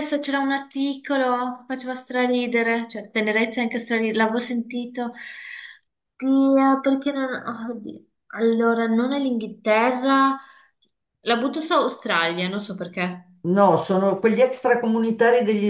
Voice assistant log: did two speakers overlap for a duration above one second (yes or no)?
no